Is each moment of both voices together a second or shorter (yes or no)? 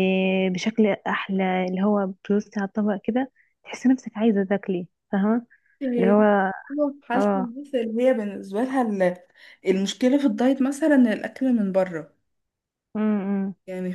yes